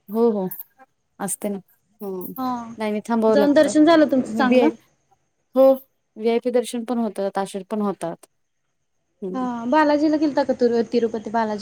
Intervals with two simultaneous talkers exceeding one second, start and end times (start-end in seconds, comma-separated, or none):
3.3-4.7